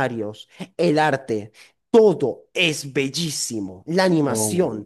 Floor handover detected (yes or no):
no